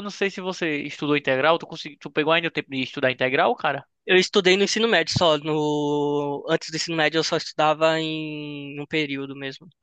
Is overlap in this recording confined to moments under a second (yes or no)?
yes